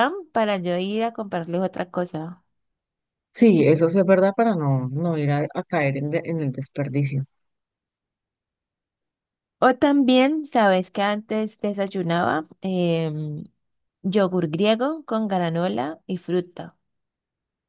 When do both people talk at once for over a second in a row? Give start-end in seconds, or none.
none